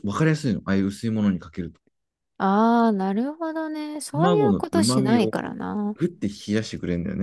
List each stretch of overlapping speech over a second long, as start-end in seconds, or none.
4.1-5.3